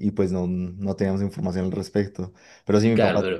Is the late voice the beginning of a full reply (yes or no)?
no